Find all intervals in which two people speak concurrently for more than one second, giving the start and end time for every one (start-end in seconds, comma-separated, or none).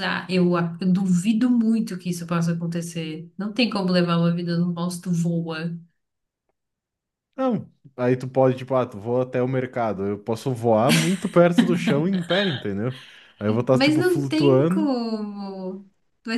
13.7-14.9